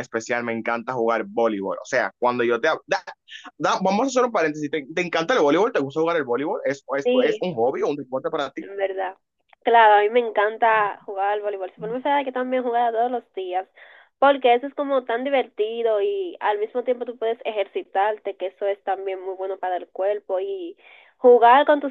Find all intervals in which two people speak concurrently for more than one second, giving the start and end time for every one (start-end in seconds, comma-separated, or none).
none